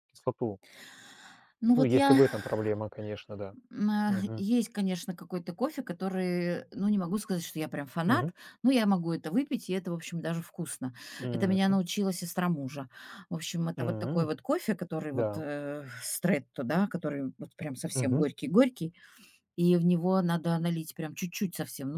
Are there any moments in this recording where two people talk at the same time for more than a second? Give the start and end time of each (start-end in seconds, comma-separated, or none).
none